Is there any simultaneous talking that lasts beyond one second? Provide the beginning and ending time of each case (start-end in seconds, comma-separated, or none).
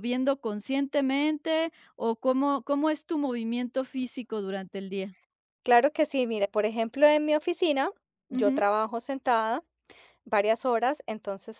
none